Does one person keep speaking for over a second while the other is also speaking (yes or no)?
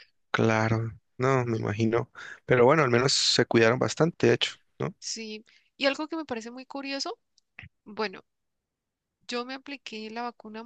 no